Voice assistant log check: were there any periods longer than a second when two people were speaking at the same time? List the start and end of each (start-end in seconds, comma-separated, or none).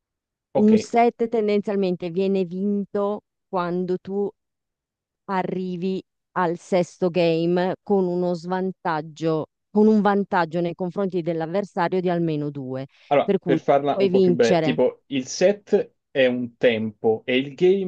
13.2-14.8